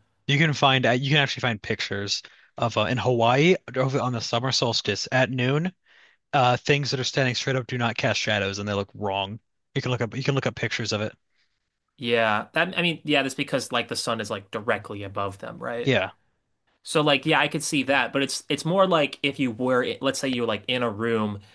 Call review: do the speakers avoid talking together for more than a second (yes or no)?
yes